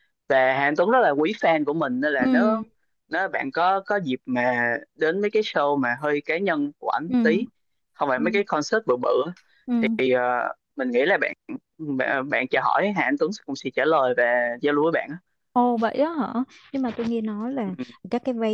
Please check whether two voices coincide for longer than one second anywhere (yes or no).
no